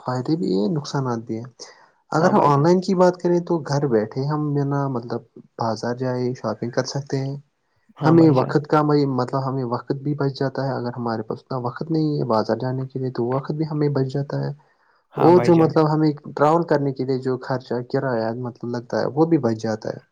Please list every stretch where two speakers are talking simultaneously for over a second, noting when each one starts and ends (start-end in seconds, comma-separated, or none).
none